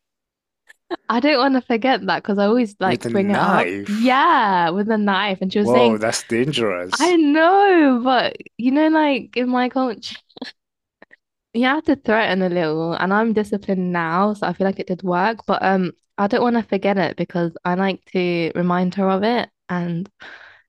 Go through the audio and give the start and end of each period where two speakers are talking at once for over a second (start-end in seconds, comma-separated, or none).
2.8-4.2